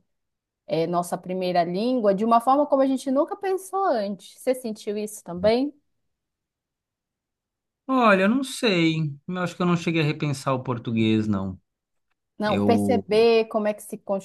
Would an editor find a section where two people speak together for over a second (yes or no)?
no